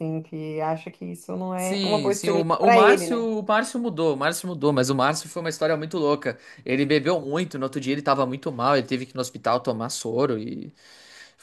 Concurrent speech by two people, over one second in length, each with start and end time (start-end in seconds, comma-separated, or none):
1.6-3.3